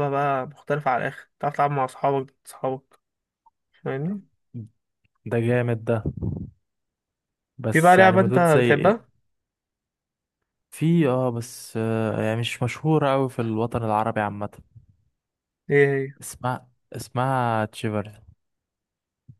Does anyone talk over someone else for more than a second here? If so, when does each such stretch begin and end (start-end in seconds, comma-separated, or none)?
7.7-9.1